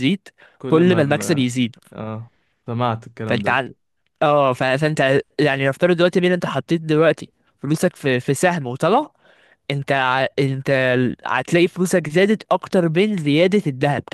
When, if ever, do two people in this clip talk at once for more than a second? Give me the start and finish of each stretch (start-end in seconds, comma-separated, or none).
none